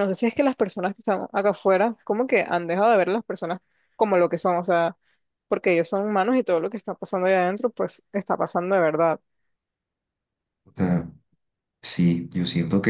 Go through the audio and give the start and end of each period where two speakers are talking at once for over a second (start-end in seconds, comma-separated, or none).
none